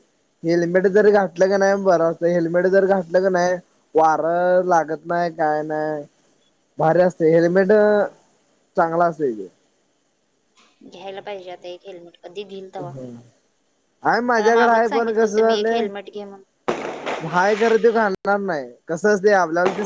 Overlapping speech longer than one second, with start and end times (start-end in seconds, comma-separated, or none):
14.3-15.8